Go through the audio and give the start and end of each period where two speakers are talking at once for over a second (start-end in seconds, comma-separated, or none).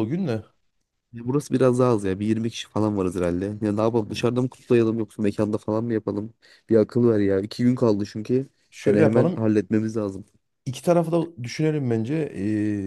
none